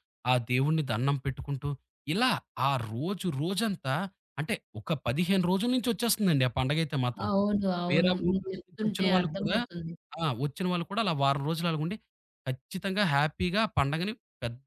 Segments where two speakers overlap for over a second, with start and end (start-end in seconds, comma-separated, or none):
7.9-9.6